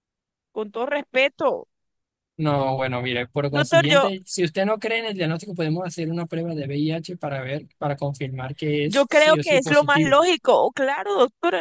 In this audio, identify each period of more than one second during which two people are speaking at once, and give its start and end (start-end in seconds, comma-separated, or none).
8.8-10.2